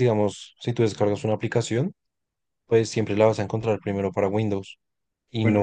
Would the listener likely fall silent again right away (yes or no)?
yes